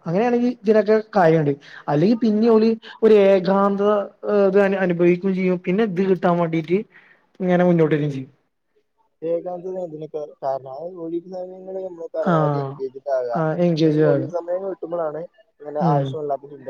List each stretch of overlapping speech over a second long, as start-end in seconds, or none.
none